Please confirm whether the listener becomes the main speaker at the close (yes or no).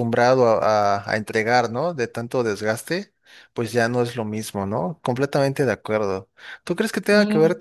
no